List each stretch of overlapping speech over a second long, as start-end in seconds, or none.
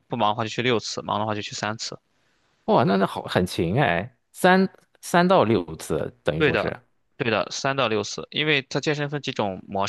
none